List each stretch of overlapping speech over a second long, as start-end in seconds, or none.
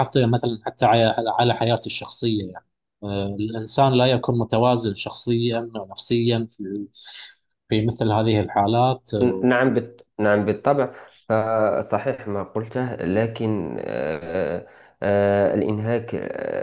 none